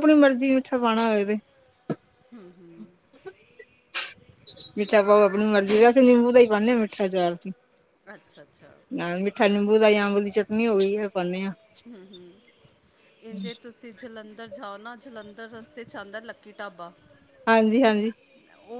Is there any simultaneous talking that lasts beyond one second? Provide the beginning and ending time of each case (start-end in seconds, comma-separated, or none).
none